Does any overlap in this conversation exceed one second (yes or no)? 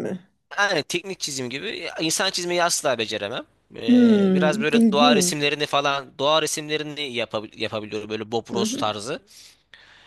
yes